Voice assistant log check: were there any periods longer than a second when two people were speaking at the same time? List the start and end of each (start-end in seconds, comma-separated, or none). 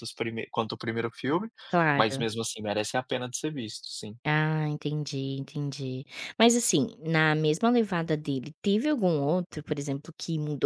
none